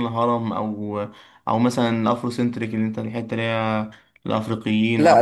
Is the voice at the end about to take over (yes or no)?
yes